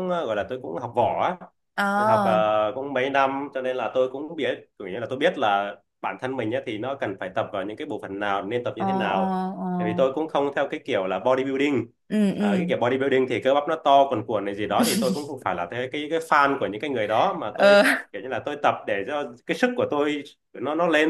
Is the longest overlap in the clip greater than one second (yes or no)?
no